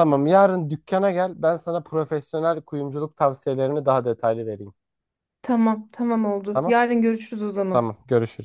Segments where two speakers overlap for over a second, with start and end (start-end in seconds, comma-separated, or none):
none